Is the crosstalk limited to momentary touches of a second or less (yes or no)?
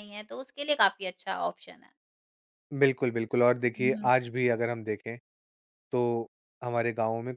yes